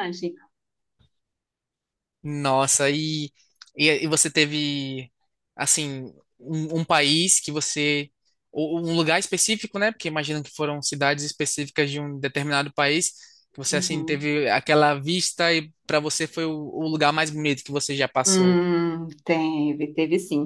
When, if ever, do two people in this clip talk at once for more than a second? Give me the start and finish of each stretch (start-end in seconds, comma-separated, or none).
none